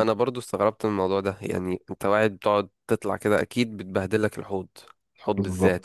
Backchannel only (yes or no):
no